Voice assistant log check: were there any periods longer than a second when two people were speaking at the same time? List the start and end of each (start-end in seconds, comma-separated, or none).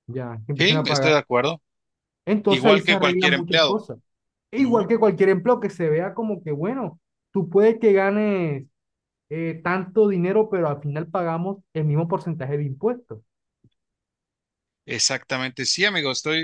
2.5-3.8